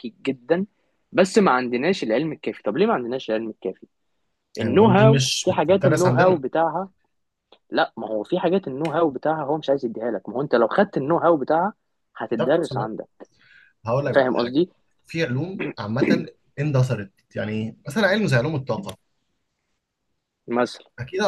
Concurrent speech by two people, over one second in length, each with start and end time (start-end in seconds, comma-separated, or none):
4.6-6.4